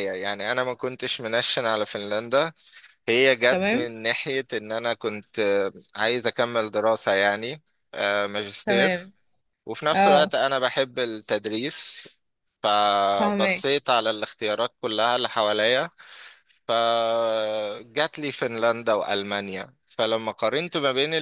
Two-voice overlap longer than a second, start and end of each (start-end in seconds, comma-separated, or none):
none